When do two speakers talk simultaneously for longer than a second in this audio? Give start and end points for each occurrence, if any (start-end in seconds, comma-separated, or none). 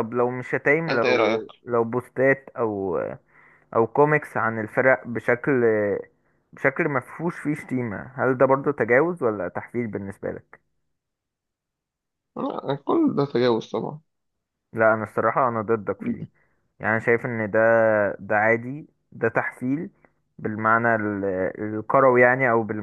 none